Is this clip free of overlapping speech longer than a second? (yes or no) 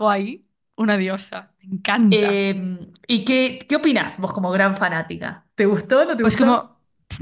yes